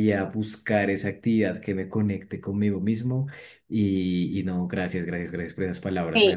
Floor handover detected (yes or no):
yes